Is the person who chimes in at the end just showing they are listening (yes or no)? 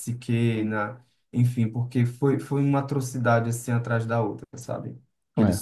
yes